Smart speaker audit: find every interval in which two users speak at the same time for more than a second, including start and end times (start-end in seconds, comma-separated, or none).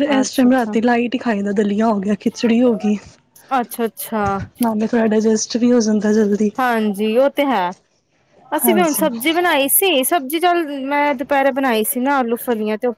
none